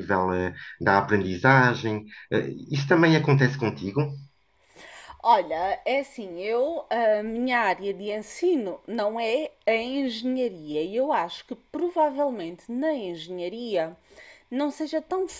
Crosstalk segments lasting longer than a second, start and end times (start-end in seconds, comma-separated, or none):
none